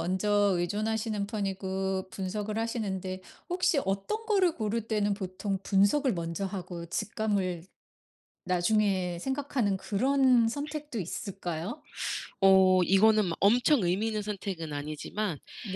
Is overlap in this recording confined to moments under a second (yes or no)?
yes